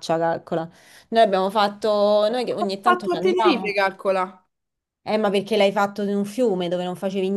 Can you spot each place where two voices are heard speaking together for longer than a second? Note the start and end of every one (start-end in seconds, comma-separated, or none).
2.6-3.8